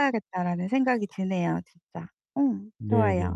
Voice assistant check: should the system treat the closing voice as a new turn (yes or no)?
yes